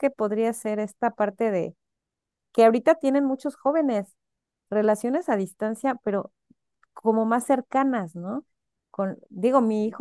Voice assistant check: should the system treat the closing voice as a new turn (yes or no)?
no